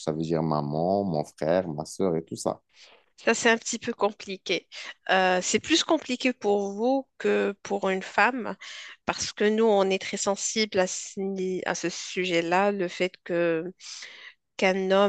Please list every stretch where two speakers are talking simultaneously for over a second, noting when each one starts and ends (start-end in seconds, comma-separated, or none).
none